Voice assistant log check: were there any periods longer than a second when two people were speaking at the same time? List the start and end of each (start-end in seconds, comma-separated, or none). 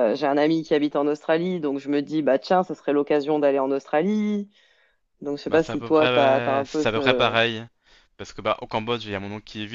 5.5-7.3